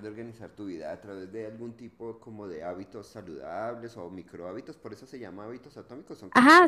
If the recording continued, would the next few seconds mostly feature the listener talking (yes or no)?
yes